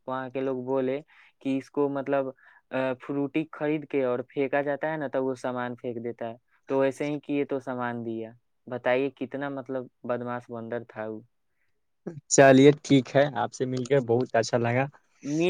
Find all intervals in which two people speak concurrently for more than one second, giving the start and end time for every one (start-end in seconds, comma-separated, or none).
none